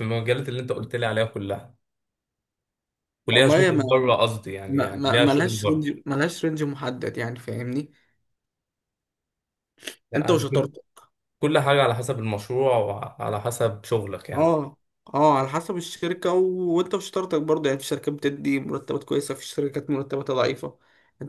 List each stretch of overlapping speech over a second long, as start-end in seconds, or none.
4.7-5.9